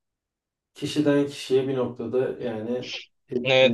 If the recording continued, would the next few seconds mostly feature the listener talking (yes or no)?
yes